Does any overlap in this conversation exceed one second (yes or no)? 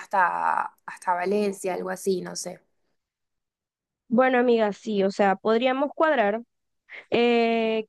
no